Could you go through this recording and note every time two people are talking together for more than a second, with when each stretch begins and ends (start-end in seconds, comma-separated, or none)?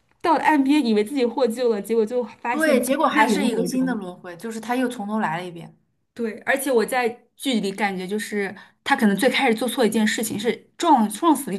2.5-4.0